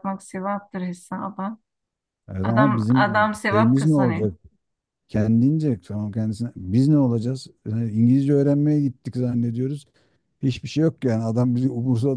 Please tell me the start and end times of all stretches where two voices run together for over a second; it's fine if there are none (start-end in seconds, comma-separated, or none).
2.4-4.3